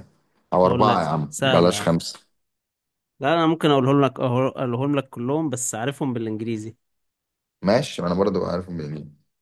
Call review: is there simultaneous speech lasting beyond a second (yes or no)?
yes